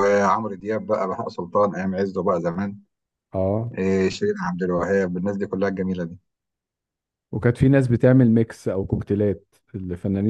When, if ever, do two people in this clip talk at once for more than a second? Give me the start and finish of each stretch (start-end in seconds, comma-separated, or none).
none